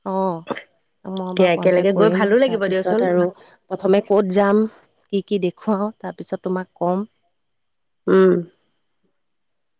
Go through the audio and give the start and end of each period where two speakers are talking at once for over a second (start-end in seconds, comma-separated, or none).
1.3-3.0